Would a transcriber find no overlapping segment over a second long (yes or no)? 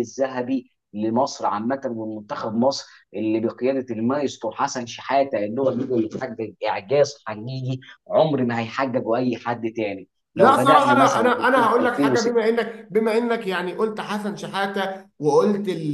no